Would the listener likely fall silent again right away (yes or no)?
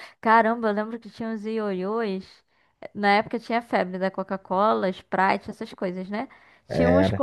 yes